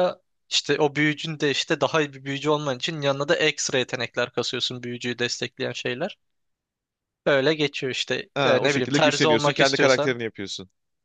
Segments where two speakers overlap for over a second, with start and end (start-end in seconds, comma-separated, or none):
8.3-10.2